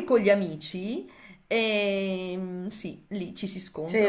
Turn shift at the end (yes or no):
yes